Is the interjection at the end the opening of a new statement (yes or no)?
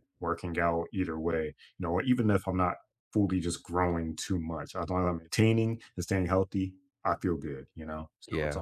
yes